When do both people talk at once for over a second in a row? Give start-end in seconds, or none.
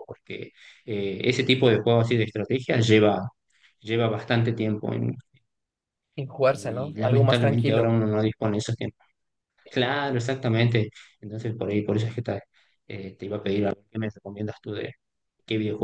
6.5-8.0